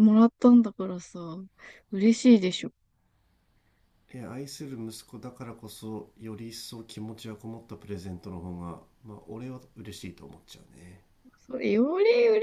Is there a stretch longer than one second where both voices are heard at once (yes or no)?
no